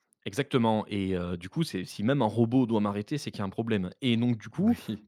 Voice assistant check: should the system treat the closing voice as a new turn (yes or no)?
no